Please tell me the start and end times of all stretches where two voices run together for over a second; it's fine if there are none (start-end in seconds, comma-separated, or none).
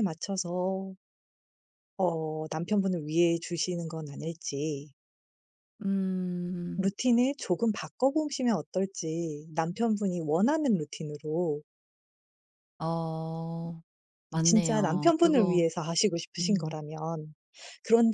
14.4-15.6